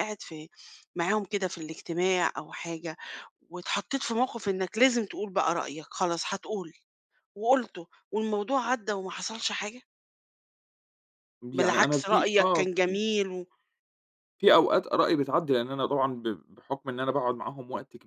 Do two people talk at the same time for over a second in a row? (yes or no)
yes